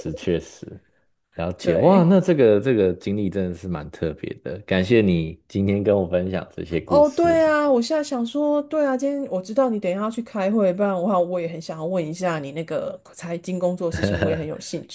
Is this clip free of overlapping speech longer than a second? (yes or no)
yes